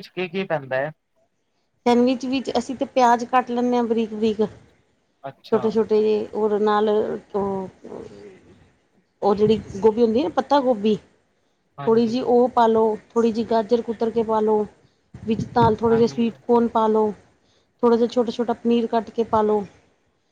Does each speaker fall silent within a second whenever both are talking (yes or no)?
yes